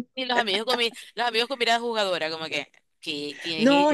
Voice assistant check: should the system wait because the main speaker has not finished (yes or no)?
no